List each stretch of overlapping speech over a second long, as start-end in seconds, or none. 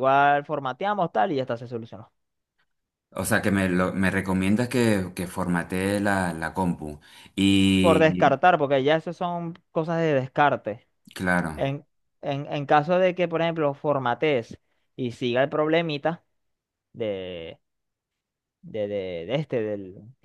none